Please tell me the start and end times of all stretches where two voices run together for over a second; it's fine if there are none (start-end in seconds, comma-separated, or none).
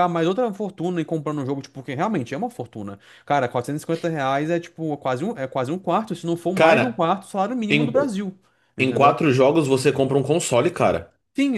none